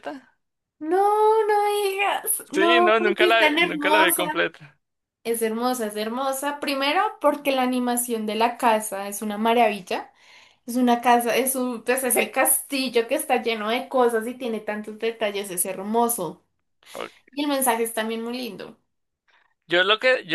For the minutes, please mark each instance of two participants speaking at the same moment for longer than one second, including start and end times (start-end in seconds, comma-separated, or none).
2.5-4.2